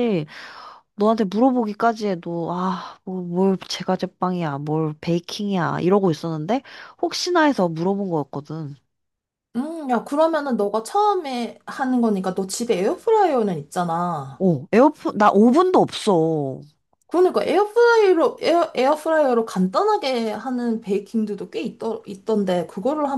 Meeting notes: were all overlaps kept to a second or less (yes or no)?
yes